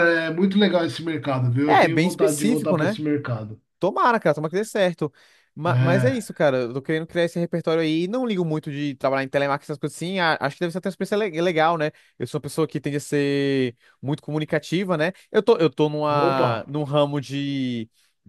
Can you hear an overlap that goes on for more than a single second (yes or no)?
yes